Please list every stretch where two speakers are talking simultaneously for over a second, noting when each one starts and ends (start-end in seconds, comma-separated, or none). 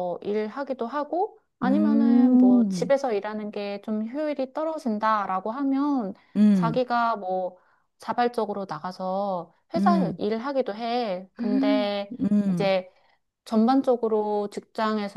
1.6-2.9